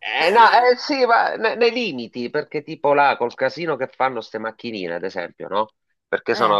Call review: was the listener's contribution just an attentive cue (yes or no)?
yes